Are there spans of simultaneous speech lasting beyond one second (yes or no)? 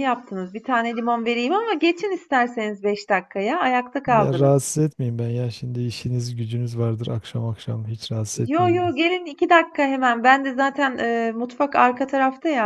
no